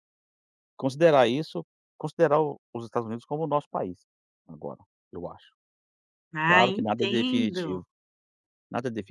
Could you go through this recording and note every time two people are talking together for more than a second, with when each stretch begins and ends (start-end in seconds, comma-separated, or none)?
6.4-7.8